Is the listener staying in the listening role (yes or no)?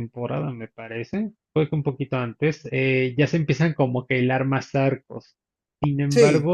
yes